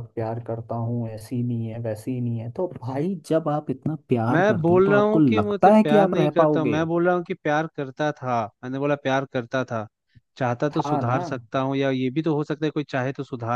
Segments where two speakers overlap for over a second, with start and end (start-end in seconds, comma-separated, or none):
4.3-6.8